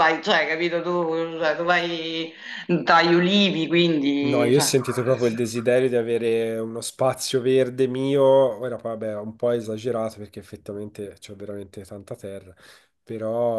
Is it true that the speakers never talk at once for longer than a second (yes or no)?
yes